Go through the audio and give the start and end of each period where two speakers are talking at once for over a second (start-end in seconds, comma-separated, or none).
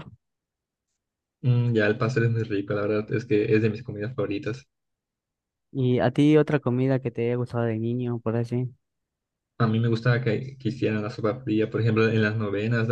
none